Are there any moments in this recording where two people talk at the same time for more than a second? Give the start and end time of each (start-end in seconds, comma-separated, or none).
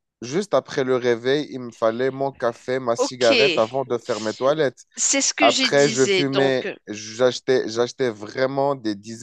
5.4-6.8